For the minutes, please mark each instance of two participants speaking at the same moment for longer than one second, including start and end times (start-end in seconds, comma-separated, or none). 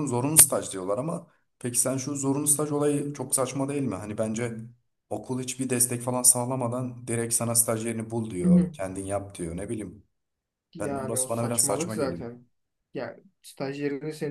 10.8-12.3